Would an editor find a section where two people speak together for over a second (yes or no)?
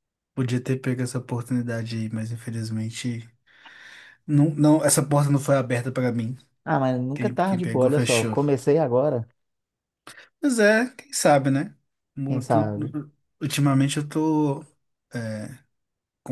yes